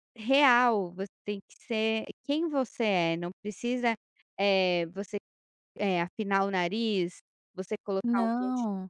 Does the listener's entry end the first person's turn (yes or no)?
no